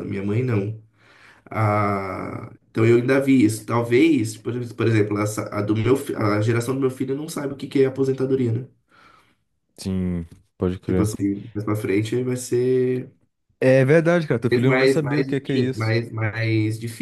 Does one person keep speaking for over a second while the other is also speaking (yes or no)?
yes